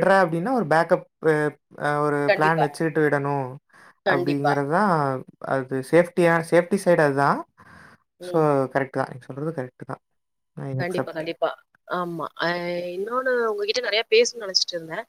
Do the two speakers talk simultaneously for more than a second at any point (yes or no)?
no